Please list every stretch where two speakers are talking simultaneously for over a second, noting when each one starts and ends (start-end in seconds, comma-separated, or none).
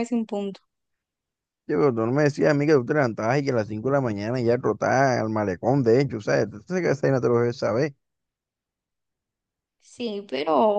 none